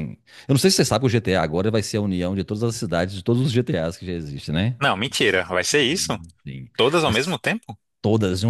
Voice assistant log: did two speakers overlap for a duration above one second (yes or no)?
no